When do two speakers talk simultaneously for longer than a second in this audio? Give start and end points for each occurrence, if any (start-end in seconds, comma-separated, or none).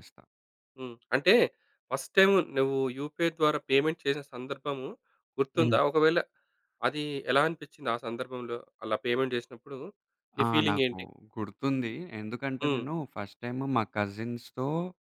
none